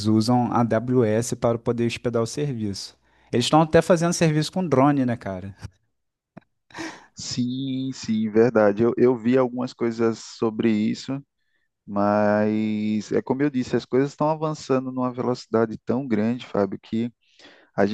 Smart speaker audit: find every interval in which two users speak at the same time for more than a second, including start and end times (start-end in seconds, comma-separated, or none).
none